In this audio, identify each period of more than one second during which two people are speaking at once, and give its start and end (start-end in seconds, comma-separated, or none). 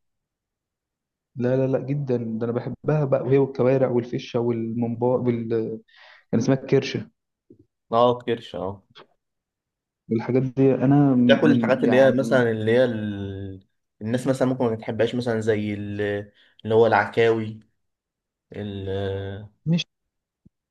11.2-12.5